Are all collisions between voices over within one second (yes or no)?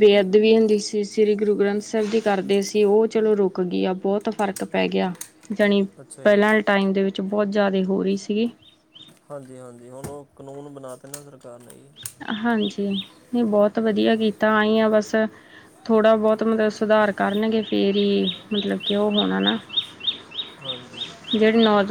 yes